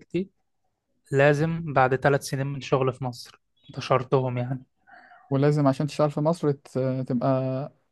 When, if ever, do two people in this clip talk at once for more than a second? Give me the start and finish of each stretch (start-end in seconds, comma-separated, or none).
none